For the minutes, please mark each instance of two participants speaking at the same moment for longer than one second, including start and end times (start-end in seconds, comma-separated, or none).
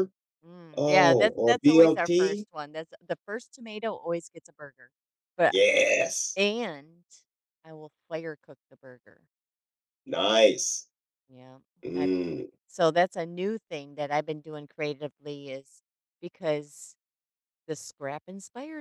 0.8-2.5